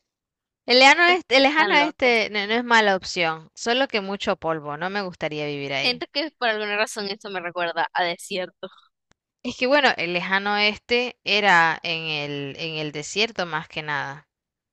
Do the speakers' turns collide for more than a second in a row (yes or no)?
yes